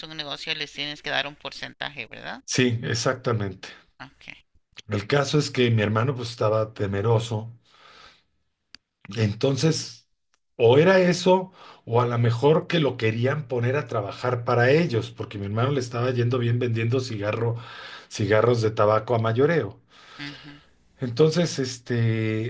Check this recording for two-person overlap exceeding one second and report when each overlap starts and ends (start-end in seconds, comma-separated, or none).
none